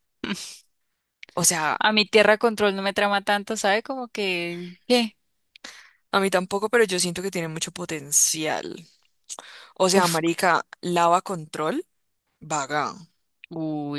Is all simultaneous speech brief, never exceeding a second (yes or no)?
yes